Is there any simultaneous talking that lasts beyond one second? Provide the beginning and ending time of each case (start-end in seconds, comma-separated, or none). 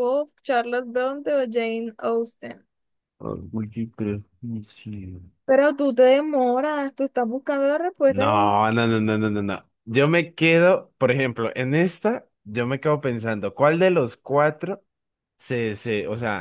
none